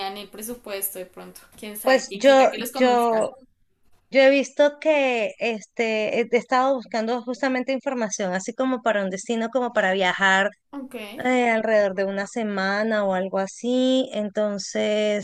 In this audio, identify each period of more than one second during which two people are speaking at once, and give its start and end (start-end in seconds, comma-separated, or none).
1.8-3.3